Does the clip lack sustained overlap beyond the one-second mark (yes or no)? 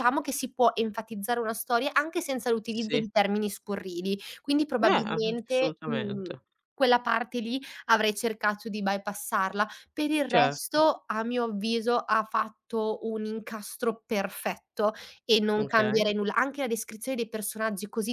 no